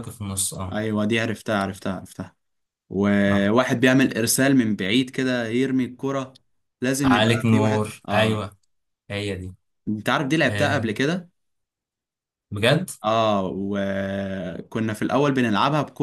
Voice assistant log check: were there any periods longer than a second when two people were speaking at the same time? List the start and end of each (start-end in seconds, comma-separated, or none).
7.0-8.5